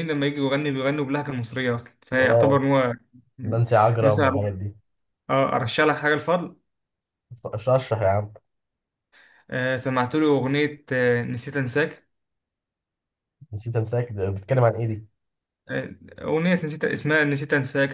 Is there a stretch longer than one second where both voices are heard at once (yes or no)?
no